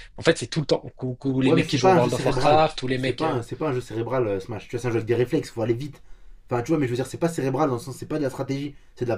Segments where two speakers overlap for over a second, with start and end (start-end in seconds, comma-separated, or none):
1.4-3.4